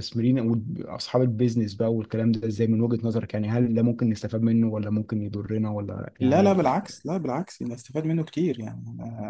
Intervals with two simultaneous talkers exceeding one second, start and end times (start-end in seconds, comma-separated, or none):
none